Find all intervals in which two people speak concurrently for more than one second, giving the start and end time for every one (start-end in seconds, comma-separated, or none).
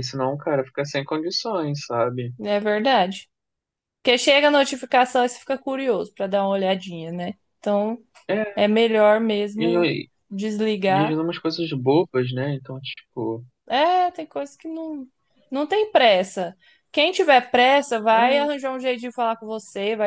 none